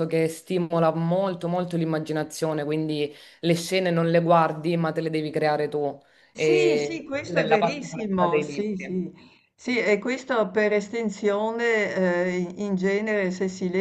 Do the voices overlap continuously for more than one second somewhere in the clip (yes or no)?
yes